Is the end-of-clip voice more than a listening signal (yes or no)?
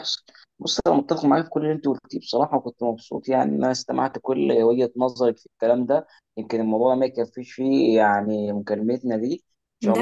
yes